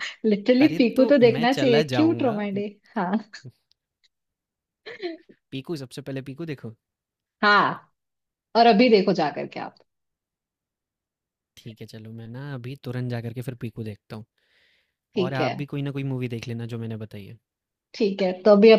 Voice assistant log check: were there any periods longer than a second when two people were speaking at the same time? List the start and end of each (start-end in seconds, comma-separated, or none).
0.6-2.4